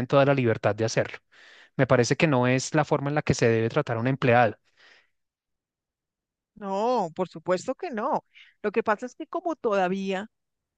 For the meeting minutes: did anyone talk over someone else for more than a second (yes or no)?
no